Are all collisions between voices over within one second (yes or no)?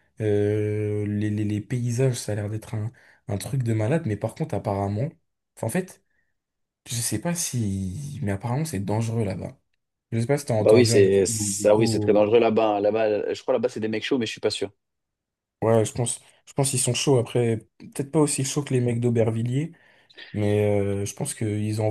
no